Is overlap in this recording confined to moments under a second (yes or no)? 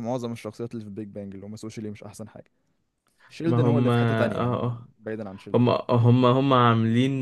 no